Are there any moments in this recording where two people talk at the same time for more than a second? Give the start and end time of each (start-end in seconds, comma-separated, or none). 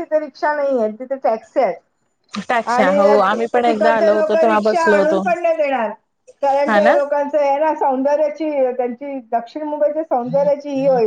2.7-5.2